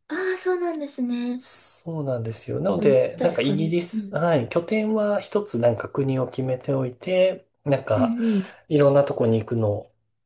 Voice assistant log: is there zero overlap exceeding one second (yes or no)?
no